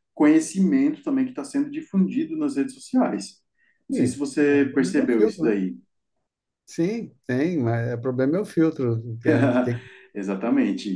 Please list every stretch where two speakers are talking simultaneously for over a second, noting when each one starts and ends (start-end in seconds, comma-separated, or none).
3.9-5.6